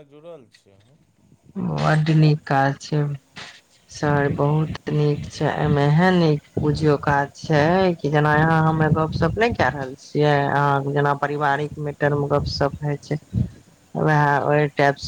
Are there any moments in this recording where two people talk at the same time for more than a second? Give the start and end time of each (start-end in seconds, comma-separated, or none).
none